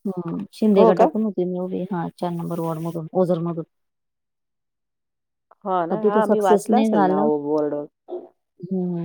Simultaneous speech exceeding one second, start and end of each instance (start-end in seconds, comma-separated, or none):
5.9-7.3